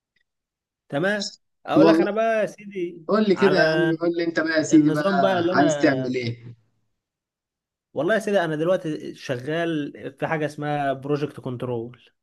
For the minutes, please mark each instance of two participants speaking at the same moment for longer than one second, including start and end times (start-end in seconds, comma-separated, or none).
4.7-6.1